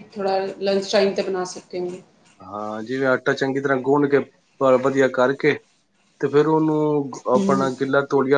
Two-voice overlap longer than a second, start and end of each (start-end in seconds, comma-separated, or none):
none